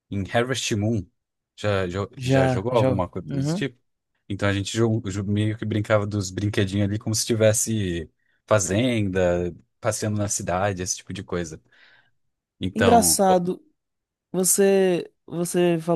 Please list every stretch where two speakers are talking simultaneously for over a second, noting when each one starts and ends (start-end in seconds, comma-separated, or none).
2.1-3.6